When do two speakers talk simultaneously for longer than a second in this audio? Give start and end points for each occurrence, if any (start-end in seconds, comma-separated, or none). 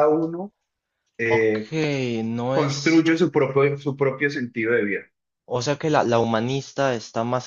none